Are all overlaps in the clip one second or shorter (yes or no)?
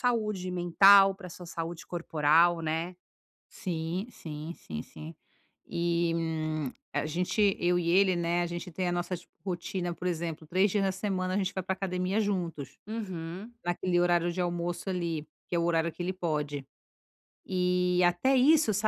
yes